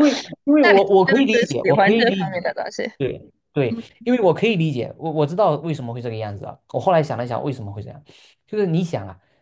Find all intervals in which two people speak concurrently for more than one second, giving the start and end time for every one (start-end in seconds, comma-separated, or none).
0.6-2.4